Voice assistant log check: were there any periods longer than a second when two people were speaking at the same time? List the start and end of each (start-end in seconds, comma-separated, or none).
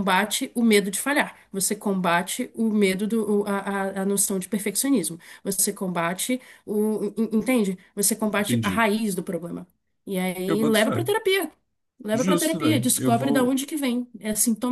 12.1-13.6